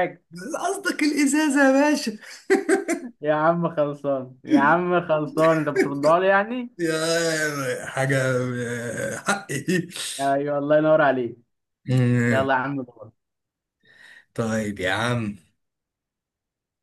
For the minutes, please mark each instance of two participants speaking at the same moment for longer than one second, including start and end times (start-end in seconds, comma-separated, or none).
none